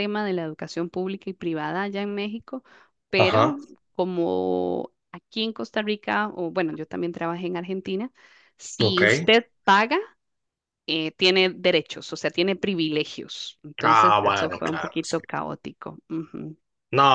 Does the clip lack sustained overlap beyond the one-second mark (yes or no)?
no